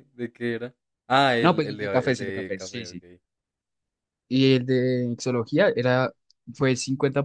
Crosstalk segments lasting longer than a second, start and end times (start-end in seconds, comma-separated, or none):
1.4-3.0